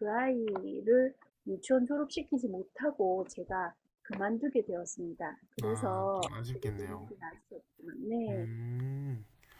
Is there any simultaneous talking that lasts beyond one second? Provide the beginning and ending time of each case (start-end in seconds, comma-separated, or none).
5.6-7.1